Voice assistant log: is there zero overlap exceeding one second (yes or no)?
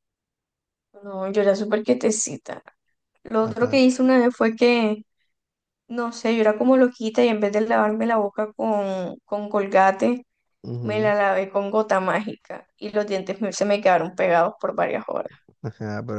yes